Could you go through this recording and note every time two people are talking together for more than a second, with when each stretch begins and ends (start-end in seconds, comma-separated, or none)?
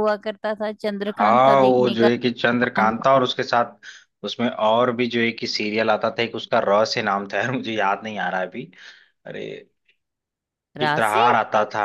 1.1-3.0